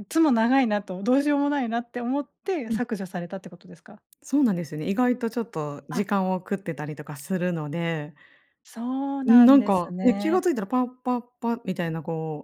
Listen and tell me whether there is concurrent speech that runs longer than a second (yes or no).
yes